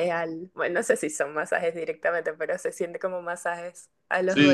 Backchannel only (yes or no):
no